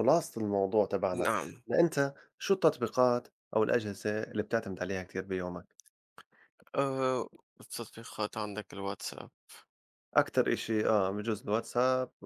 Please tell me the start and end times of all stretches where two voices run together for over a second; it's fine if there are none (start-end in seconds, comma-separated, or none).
none